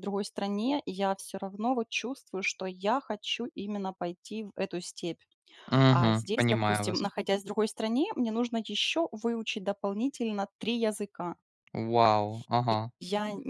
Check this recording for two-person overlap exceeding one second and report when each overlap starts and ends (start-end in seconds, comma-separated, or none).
5.9-7.1